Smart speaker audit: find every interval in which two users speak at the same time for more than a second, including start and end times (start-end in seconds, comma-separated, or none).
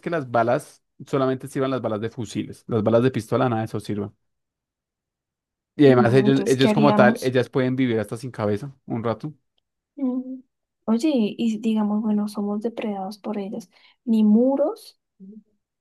5.8-7.3